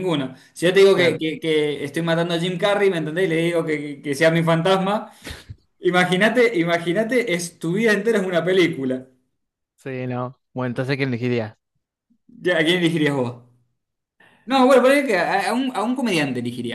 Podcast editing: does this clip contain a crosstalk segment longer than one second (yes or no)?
no